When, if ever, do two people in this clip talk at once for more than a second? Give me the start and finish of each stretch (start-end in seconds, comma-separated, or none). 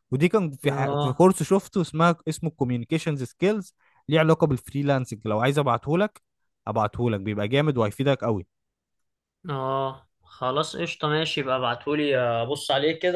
none